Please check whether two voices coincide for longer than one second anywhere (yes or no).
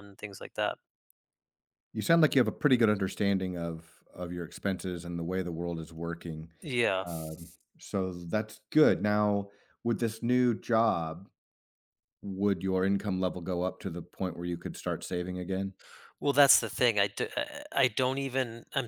no